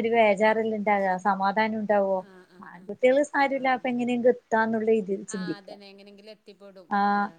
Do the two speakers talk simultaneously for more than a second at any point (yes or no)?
no